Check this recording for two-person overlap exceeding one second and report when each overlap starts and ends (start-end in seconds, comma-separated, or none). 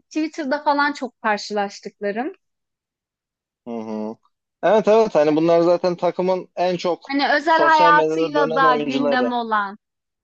7.1-9.3